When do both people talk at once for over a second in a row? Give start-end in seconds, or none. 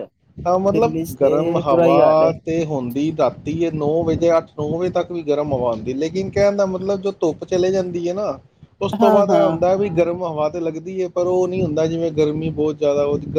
0.7-2.3